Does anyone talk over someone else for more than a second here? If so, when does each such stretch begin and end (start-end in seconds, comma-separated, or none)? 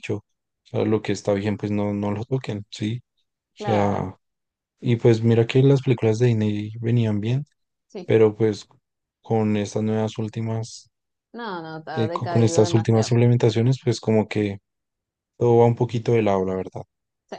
11.9-13.1